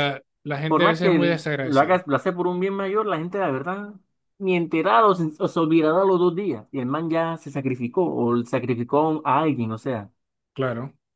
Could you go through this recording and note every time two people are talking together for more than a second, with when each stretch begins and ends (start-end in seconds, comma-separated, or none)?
0.7-2.0